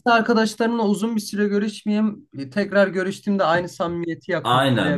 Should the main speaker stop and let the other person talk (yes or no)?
yes